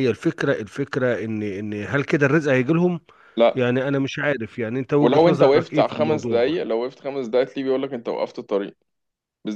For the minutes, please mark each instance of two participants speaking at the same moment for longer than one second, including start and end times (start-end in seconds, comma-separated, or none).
5.0-6.6